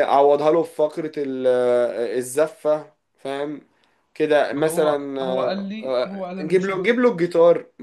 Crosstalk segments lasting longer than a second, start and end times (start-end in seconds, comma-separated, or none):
4.5-6.9